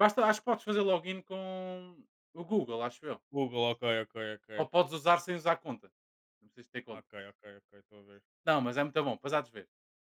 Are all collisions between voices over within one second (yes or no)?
yes